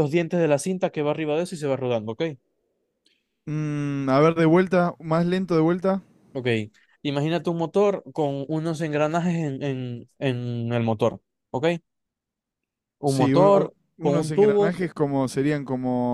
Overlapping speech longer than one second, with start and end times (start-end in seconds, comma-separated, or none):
13.0-14.8